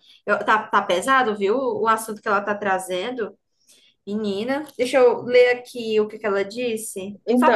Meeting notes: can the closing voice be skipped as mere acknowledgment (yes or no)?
no